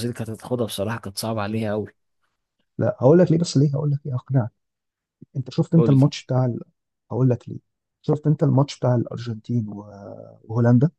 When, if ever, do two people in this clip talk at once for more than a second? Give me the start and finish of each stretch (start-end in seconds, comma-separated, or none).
none